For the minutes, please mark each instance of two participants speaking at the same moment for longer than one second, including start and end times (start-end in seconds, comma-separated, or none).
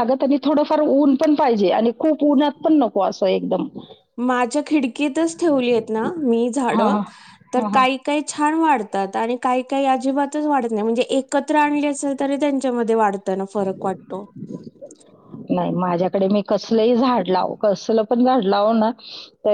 none